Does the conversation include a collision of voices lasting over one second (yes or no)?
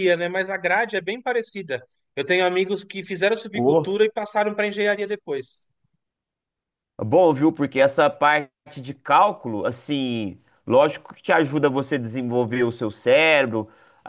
no